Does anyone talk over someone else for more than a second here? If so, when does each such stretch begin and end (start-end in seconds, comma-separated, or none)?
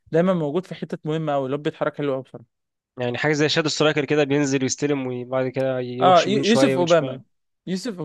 6.0-7.2